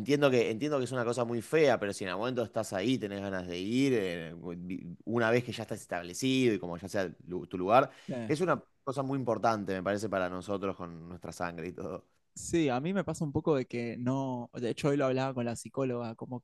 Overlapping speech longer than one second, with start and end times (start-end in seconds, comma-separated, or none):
none